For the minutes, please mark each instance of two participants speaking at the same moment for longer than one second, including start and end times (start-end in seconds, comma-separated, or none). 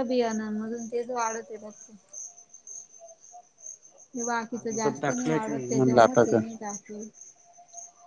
4.6-6.4